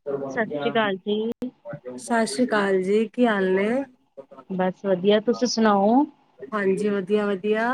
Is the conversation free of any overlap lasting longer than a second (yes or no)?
yes